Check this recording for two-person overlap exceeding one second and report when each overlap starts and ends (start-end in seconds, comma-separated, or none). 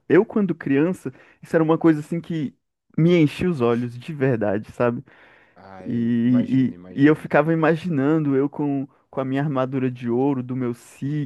5.8-7.3